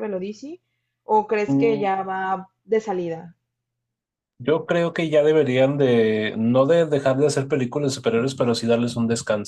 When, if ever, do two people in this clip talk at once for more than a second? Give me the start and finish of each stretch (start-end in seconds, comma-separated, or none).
none